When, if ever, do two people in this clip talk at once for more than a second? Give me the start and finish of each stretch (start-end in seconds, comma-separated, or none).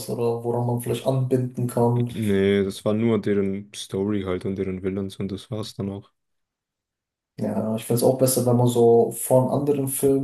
none